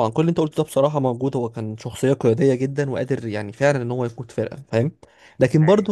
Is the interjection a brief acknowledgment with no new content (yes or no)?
yes